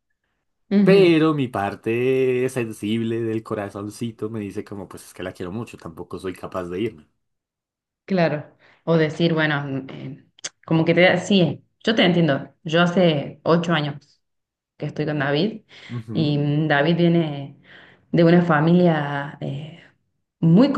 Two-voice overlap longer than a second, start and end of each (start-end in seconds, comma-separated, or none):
none